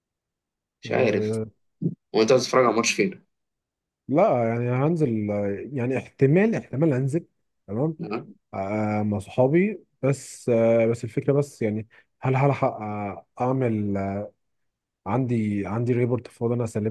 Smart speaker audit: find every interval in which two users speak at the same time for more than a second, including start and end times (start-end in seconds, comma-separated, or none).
none